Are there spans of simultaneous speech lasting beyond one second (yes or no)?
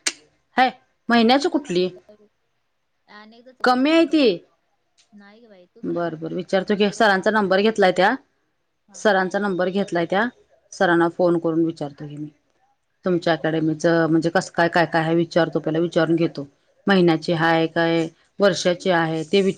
yes